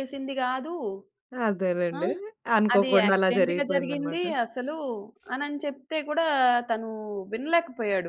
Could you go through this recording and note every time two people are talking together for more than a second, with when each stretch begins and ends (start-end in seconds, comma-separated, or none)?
2.7-4.2